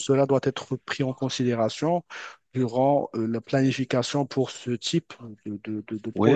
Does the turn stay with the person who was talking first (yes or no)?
no